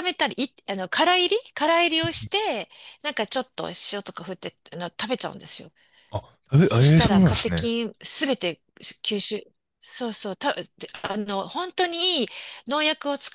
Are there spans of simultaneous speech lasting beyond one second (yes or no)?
yes